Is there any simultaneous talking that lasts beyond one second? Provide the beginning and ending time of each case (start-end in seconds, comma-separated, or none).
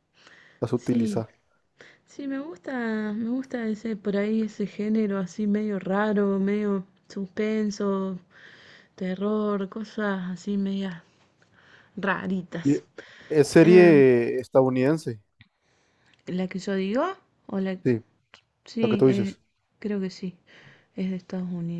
none